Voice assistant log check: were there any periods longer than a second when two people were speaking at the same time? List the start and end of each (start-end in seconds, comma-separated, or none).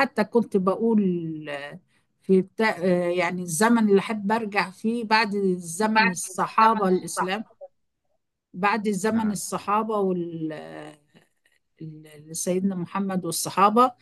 5.8-7.4